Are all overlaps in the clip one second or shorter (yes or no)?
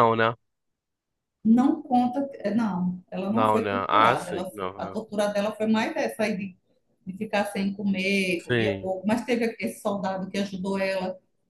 no